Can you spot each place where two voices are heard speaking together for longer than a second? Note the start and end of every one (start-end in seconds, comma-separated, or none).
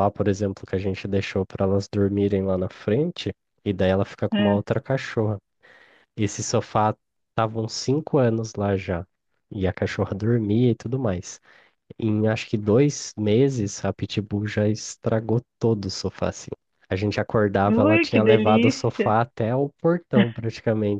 17.7-19.1